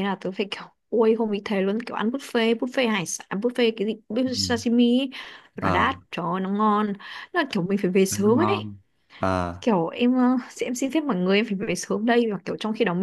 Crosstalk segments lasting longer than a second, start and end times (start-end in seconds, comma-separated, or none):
none